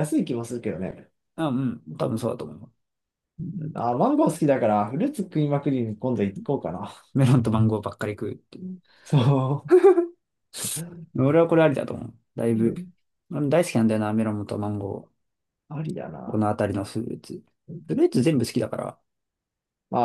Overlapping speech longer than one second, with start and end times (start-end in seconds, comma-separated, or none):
none